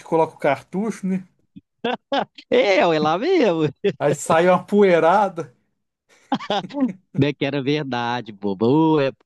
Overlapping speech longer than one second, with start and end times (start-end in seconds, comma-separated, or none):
none